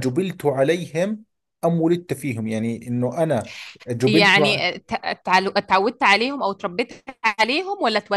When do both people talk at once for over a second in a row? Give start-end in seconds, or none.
none